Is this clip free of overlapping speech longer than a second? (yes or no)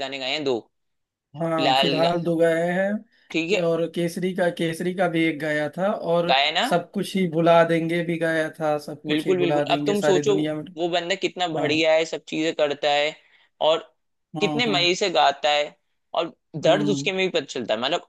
no